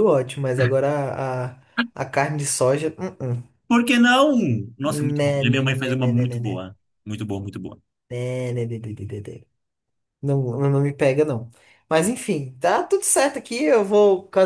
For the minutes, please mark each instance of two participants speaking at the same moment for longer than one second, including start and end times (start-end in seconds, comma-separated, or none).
4.8-6.6